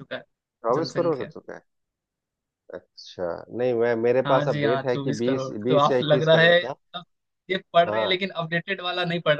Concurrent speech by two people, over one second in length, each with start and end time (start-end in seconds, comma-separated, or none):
4.2-6.6